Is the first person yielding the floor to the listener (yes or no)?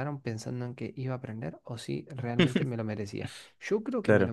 no